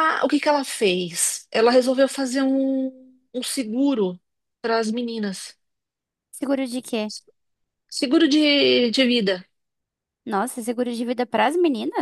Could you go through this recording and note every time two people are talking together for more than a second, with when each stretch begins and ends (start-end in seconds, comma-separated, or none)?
none